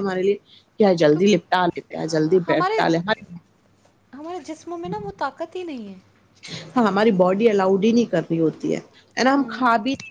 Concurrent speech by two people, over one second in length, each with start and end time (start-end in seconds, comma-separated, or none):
1.1-2.8